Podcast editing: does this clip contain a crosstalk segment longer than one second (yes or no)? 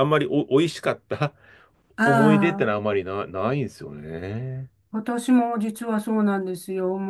no